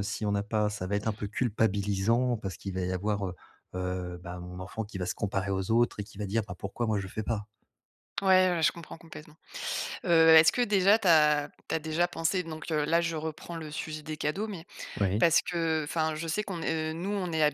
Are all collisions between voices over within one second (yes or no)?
yes